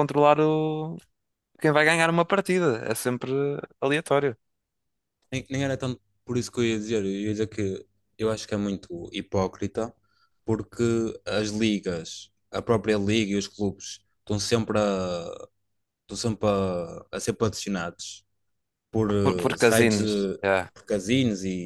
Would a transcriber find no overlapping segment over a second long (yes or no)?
no